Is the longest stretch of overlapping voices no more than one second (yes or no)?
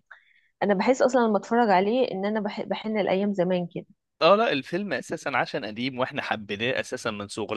yes